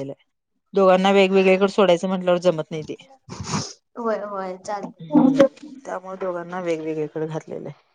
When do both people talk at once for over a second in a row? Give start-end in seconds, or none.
none